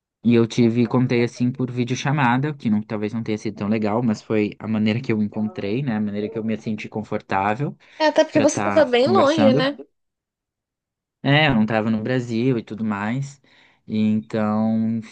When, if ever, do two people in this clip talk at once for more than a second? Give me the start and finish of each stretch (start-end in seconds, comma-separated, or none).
8.3-9.7